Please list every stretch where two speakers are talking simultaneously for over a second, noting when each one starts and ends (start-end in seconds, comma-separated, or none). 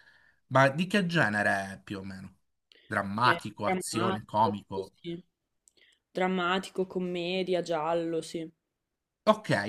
3.2-4.5